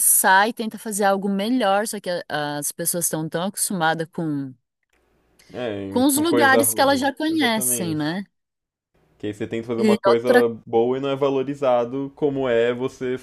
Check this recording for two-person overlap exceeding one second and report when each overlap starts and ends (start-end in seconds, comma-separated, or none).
5.9-8.2